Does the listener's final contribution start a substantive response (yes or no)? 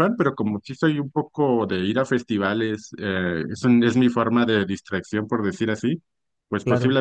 no